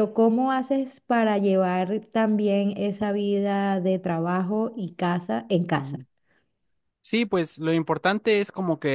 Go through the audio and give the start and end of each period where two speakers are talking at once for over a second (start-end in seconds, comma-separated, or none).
none